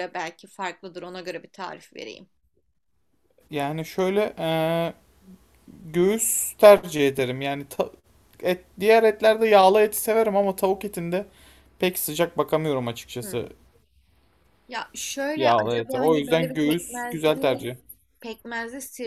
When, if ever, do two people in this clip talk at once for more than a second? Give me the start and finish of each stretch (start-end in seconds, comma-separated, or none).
15.3-17.7